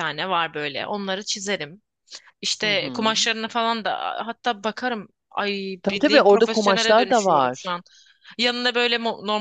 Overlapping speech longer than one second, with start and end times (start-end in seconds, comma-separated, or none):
5.8-7.8